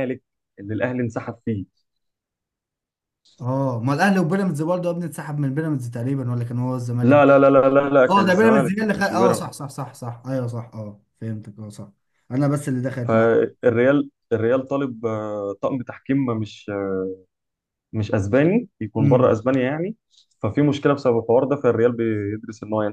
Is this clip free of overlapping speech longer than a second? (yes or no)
no